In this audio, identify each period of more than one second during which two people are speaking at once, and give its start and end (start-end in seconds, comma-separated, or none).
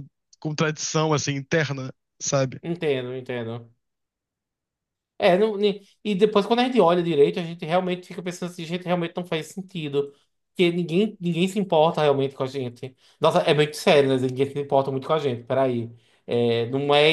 none